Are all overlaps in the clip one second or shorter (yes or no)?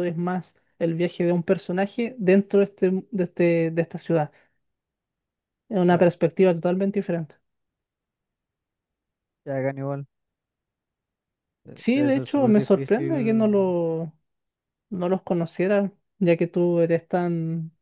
no